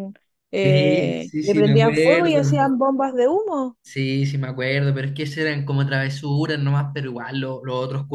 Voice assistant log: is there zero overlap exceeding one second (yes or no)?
no